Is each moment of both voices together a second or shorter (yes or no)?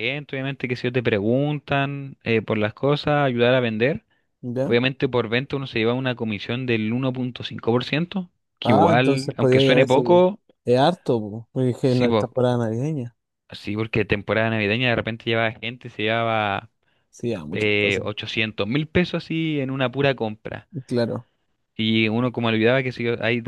no